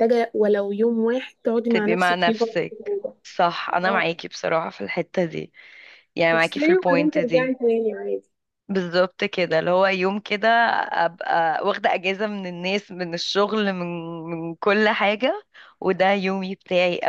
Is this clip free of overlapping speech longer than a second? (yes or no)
no